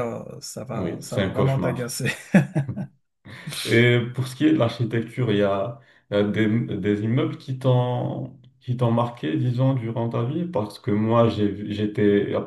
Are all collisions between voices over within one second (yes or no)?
no